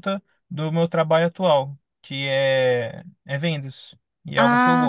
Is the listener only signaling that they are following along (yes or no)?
no